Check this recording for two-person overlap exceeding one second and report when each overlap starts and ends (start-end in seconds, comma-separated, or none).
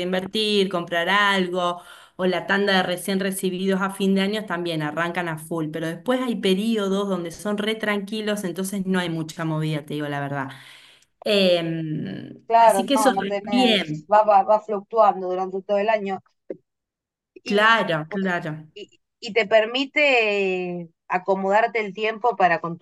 12.5-14.1